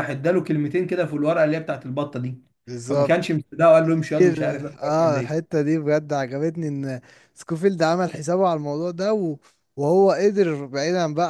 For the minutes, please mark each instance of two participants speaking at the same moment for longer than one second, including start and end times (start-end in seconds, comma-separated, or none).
4.1-5.5